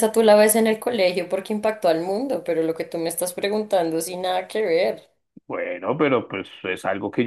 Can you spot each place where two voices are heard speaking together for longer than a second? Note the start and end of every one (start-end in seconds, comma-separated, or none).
none